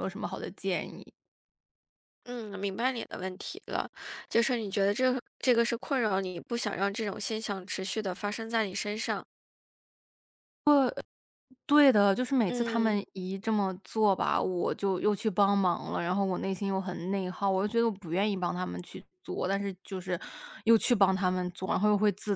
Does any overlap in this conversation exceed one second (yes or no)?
no